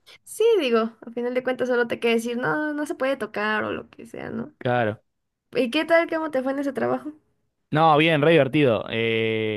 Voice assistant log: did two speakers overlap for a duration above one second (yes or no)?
no